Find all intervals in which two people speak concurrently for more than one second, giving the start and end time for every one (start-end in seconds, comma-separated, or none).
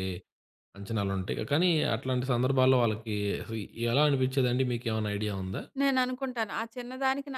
none